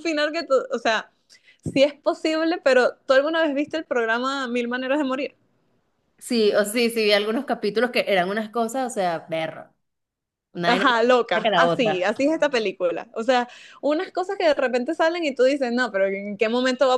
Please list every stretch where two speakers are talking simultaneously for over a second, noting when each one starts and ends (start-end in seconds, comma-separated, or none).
10.7-12.1